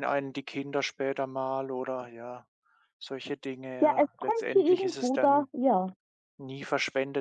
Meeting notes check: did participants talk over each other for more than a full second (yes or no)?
yes